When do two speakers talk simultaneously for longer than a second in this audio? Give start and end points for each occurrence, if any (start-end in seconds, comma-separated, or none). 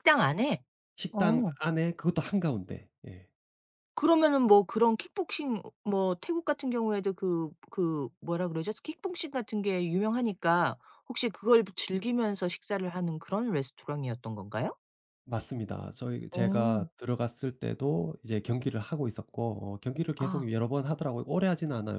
none